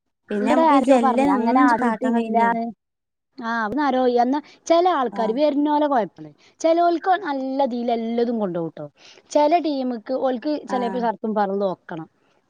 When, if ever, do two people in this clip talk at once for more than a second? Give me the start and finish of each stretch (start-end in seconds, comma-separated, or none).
0.9-2.5